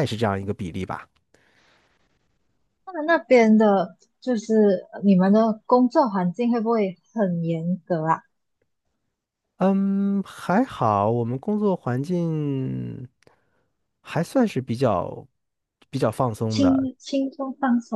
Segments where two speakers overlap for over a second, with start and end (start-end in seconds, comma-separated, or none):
none